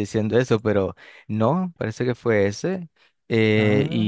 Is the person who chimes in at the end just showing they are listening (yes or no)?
yes